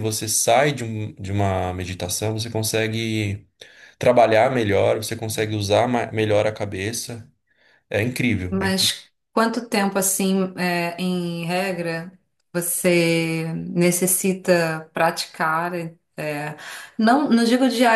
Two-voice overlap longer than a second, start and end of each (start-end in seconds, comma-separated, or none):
none